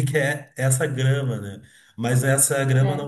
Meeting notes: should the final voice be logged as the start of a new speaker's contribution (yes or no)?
no